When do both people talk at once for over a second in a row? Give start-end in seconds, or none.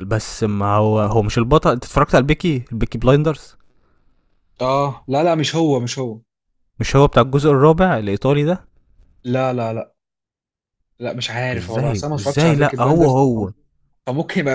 11.6-13.5